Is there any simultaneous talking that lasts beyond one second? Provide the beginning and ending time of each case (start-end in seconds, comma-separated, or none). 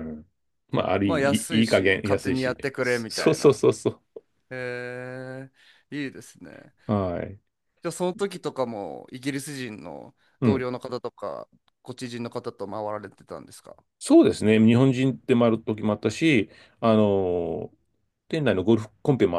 1.1-3.6